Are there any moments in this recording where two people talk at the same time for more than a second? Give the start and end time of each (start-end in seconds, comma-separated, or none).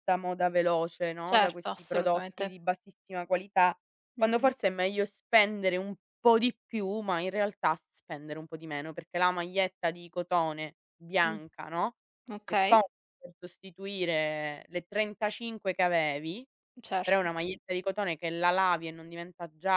1.3-2.5